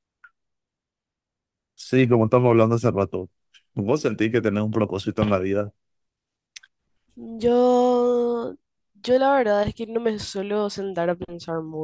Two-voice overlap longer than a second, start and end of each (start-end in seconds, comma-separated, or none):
none